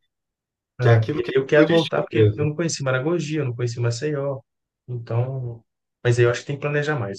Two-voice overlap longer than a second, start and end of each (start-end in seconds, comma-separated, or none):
0.8-2.5